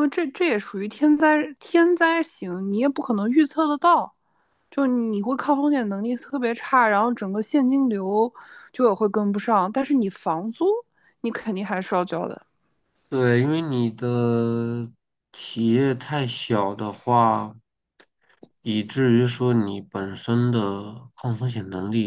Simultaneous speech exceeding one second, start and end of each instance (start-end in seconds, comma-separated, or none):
none